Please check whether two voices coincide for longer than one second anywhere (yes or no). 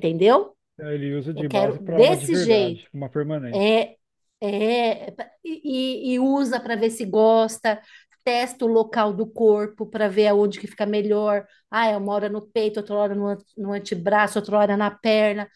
yes